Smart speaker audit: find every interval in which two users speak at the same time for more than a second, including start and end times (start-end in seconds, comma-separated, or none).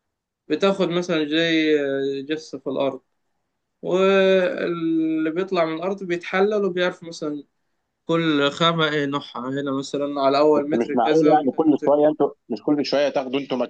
10.6-12.1